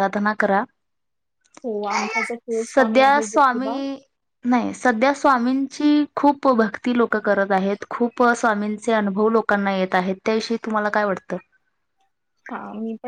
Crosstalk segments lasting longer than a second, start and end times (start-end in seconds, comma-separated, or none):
2.5-3.8